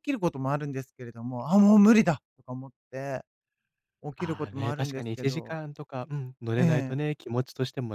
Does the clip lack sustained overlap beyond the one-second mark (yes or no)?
no